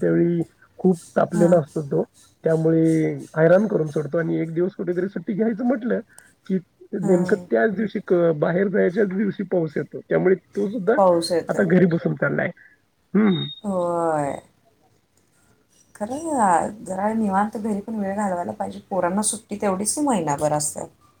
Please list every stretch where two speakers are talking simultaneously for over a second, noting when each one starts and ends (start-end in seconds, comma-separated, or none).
none